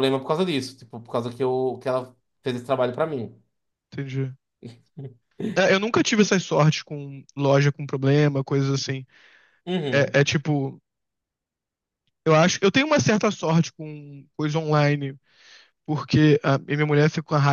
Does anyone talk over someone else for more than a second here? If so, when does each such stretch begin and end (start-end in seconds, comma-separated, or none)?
none